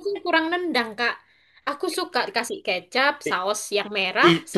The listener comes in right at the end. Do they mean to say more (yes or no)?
yes